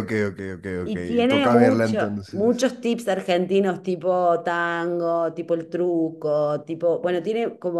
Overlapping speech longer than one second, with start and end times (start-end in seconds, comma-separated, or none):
0.8-2.6